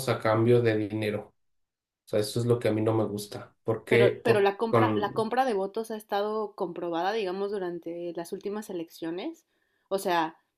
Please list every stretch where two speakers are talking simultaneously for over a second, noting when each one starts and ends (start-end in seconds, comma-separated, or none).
3.9-5.3